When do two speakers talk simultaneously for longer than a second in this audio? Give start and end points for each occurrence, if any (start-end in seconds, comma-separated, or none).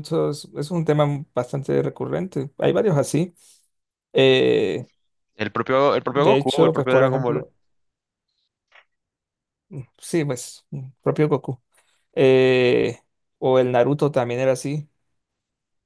6.1-7.4